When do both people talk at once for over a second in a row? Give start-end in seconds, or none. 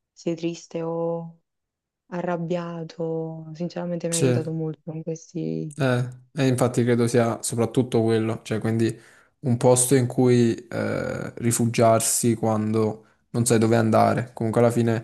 none